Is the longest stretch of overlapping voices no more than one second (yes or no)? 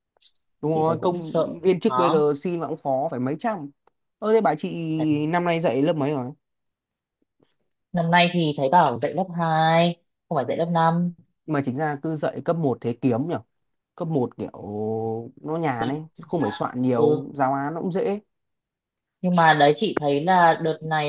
no